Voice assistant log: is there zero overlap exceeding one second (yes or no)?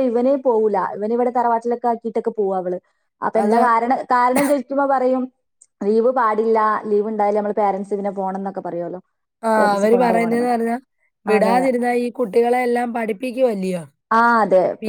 yes